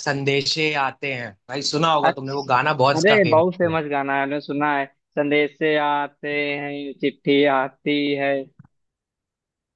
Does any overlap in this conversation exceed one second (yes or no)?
yes